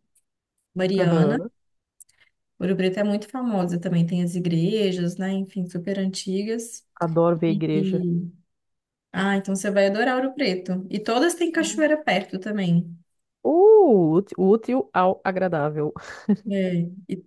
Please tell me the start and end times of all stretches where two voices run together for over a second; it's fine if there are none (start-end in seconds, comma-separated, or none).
none